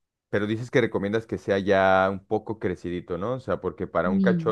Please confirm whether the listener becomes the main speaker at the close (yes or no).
no